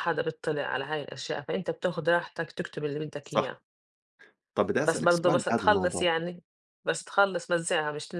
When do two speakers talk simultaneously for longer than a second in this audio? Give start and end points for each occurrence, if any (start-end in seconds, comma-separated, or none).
4.8-6.0